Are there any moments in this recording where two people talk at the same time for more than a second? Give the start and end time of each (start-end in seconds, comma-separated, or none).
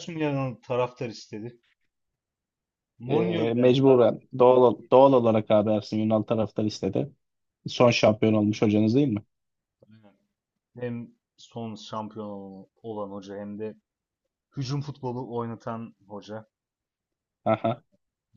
3.1-5.2